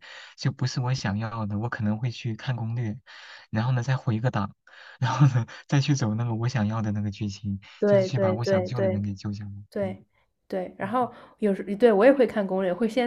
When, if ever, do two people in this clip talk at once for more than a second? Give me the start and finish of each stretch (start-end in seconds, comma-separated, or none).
7.8-9.0